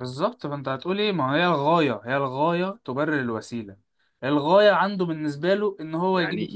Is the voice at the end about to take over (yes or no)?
yes